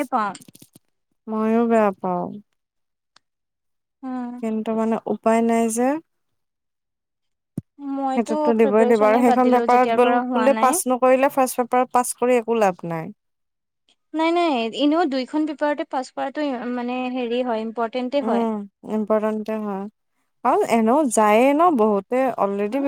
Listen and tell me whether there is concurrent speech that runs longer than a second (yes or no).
yes